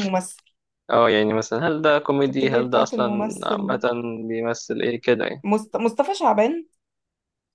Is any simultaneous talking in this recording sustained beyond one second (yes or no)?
yes